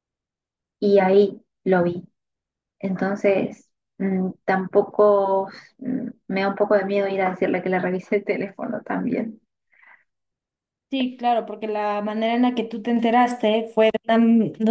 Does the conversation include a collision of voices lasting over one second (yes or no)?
no